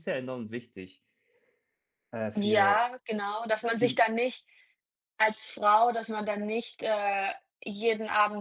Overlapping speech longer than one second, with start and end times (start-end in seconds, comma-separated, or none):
none